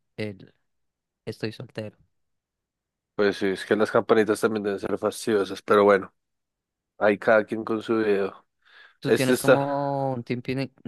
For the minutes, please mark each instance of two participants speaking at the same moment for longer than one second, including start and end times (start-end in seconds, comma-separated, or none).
none